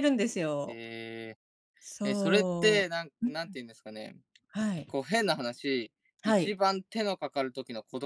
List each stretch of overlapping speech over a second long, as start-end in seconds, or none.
2.0-3.5